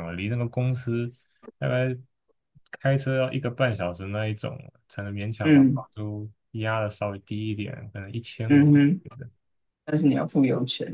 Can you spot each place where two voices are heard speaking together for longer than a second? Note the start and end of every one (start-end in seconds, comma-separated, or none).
none